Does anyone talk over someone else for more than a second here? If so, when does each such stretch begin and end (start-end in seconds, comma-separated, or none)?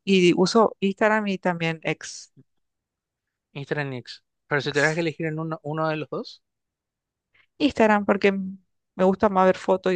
none